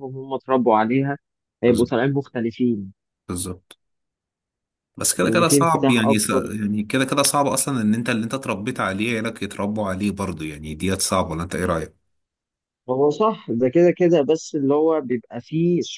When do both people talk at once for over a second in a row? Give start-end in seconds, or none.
5.2-6.4